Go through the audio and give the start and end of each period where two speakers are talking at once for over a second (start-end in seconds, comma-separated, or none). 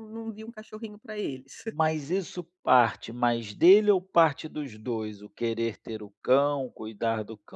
none